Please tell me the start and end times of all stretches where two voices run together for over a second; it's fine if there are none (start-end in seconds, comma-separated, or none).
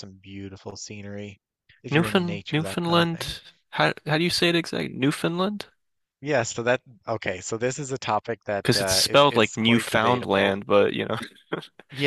1.9-3.3, 8.6-10.6